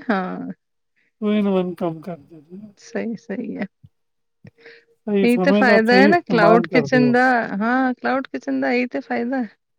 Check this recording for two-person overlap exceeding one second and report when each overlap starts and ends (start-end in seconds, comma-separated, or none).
5.2-7.1